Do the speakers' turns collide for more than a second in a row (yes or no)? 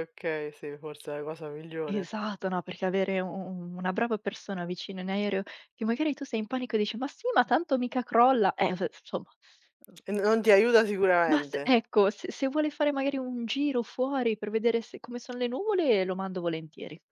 no